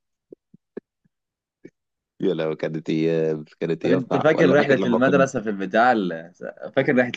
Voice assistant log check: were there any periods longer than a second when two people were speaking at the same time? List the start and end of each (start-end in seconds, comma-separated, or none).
3.8-5.3